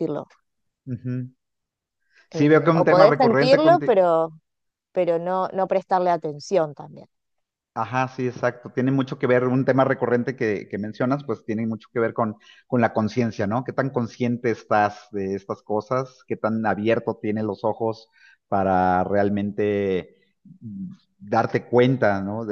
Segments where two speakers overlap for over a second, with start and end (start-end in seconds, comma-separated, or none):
2.3-3.9